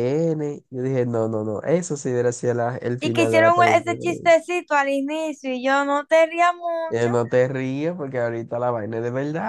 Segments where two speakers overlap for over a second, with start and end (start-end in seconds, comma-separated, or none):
3.0-4.3